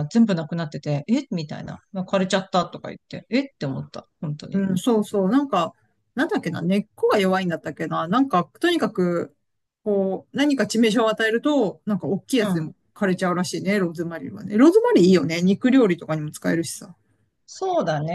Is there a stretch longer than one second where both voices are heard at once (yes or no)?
no